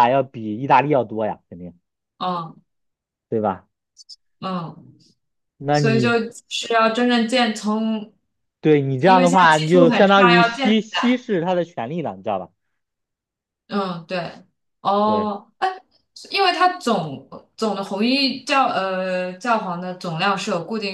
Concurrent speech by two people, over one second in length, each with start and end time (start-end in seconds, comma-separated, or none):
9.0-10.7